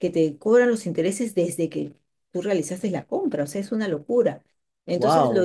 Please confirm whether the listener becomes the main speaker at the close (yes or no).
yes